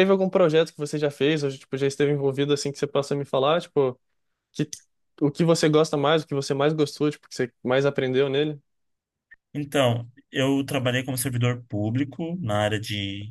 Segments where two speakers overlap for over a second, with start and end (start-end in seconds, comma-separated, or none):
none